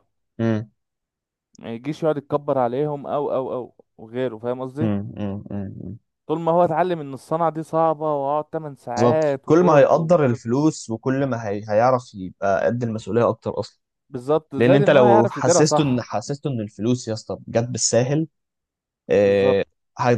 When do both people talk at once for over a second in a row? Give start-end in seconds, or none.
8.9-10.4, 14.6-16.0